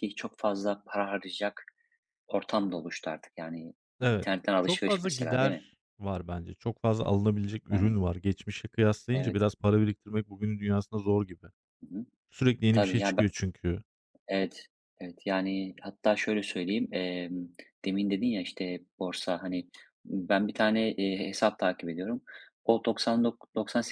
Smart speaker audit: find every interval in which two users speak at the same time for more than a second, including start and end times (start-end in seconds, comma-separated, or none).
4.0-5.7